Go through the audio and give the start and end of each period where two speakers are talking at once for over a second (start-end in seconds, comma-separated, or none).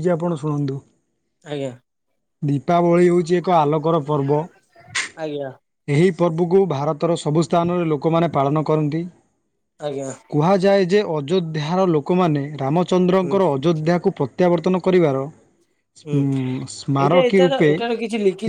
16.1-17.7